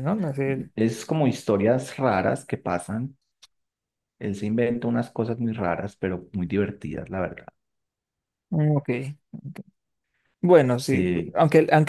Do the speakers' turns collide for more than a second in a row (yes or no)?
no